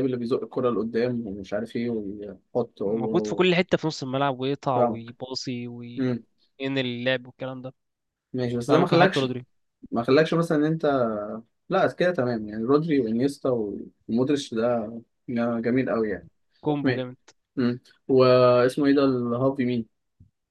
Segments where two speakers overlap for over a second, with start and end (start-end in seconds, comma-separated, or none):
none